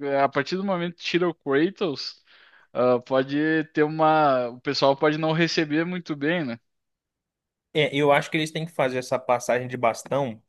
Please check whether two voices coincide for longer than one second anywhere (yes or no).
no